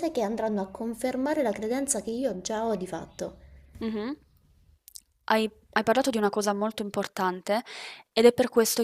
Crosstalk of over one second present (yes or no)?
no